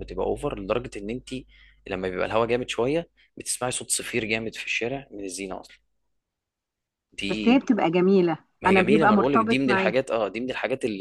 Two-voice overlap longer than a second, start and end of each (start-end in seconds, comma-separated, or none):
8.6-9.9